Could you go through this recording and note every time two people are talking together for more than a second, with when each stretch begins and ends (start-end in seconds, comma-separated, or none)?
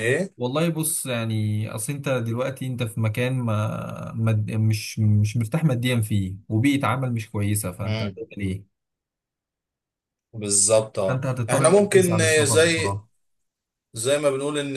11.1-13.0